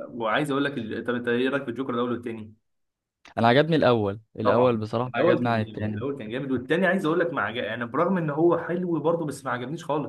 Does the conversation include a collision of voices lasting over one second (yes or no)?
yes